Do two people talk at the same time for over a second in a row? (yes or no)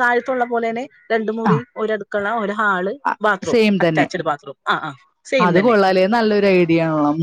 no